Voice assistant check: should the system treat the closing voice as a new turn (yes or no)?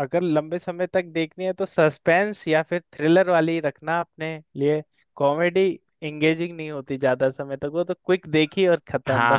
yes